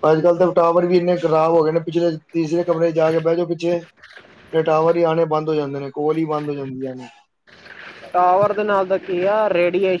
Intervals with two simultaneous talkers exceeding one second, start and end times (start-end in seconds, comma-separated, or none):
none